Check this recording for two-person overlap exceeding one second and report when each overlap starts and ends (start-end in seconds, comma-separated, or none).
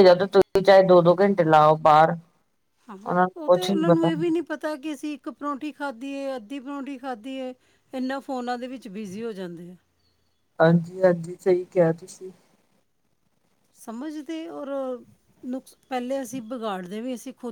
none